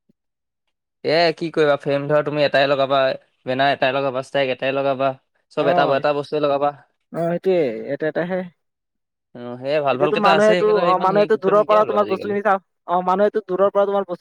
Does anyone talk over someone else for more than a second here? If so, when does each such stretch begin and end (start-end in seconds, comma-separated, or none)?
9.9-12.3